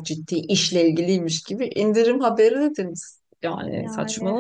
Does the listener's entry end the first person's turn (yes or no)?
no